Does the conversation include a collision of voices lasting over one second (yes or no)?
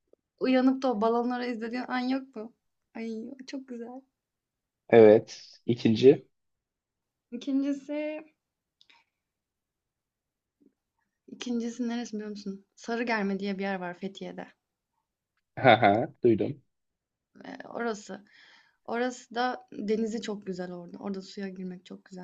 no